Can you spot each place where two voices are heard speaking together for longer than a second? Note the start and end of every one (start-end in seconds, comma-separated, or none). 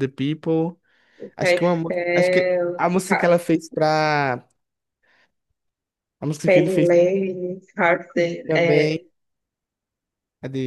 1.4-3.4